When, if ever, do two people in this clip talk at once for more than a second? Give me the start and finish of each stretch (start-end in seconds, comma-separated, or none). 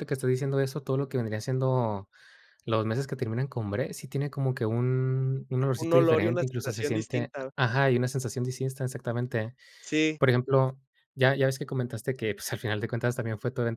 5.8-7.5